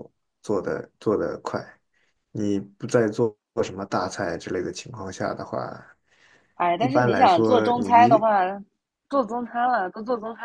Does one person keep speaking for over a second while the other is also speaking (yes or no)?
yes